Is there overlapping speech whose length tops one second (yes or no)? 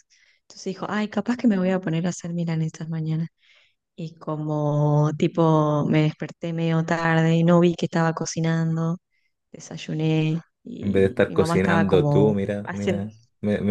yes